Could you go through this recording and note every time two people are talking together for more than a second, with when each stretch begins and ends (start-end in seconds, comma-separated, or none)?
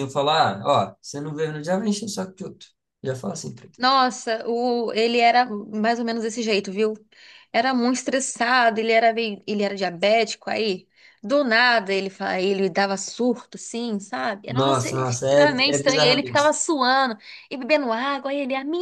14.5-16.5